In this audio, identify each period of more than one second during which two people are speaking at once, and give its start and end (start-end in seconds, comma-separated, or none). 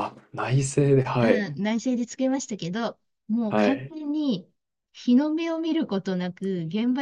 none